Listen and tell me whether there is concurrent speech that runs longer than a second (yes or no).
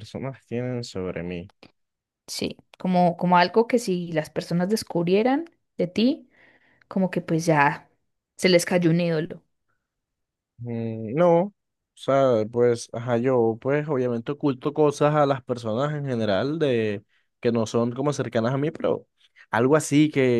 no